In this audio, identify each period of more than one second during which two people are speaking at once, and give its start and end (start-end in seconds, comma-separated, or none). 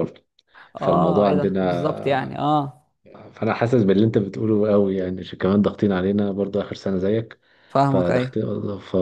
0.8-2.4